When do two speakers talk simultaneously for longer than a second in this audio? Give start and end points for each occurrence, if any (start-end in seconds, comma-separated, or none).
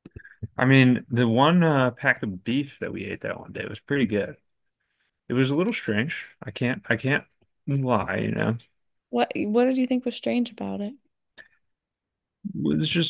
none